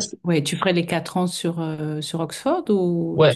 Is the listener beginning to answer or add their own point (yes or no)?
yes